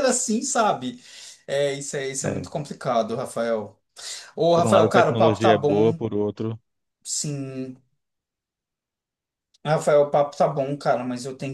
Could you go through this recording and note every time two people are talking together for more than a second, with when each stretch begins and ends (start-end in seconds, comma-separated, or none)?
4.5-6.0